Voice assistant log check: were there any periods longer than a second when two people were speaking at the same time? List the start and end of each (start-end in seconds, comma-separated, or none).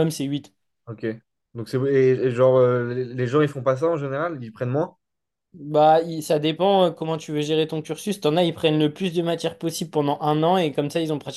none